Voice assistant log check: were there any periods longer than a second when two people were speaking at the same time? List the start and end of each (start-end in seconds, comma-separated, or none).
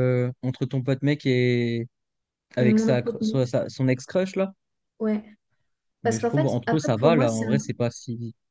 6.0-7.6